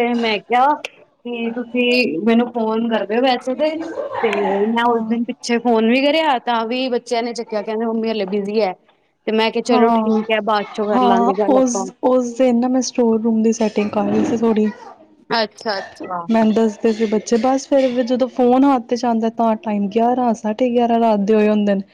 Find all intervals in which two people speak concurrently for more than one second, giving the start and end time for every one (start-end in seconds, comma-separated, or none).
none